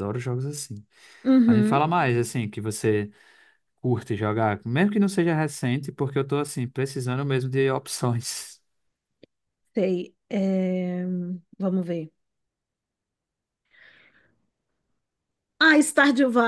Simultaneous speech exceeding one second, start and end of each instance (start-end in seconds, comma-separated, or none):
none